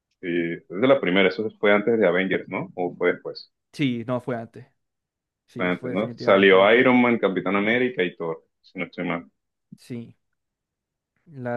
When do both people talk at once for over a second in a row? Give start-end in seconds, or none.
5.6-6.8